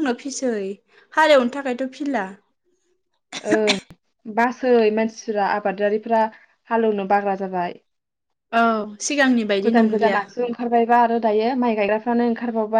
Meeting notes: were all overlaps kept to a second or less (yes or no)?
yes